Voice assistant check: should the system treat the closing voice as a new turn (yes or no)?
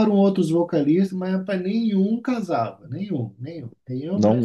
yes